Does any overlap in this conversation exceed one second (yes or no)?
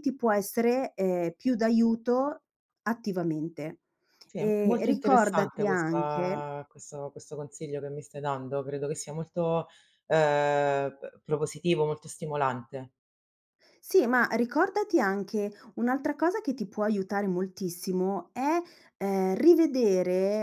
yes